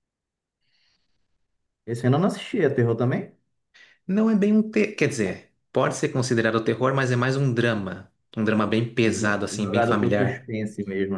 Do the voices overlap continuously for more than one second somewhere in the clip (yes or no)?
yes